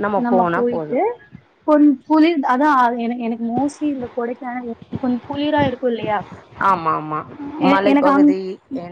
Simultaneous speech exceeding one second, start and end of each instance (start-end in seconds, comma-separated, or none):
none